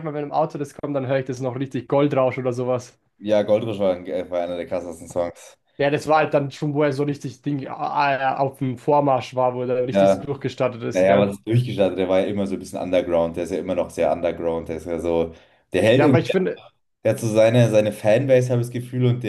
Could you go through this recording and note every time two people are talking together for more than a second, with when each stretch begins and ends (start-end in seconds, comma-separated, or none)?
none